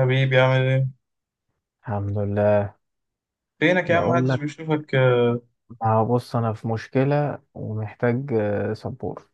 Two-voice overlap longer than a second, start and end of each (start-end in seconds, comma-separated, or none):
none